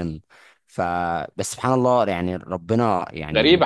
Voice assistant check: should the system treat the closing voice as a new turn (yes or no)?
yes